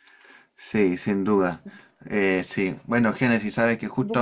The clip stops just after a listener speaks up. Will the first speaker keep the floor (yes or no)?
yes